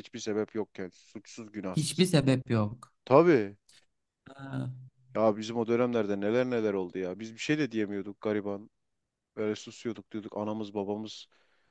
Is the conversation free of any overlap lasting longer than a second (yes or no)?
yes